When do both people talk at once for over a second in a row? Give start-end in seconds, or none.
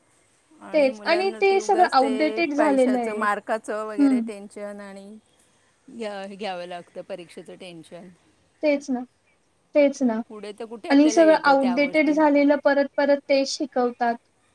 0.9-3.2, 10.9-12.2